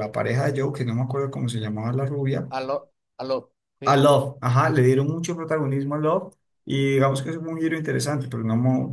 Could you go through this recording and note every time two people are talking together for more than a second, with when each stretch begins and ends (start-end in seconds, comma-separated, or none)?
none